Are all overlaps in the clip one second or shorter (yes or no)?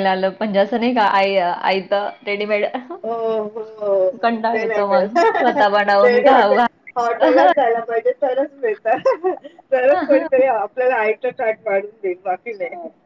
no